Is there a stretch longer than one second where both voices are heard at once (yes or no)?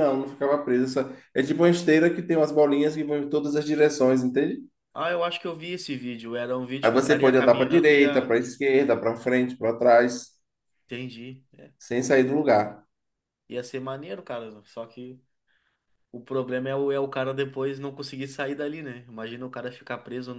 yes